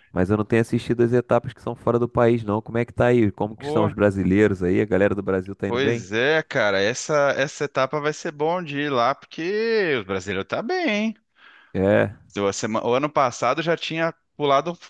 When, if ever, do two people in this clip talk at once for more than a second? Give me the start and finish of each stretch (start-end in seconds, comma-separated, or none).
none